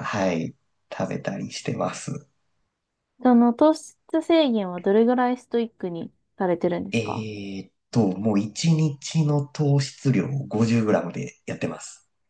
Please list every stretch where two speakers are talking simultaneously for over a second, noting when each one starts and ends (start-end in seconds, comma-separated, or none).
none